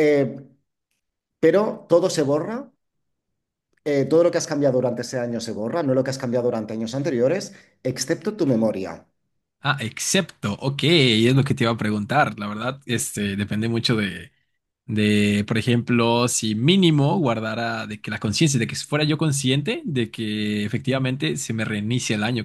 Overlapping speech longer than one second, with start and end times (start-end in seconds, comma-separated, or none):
none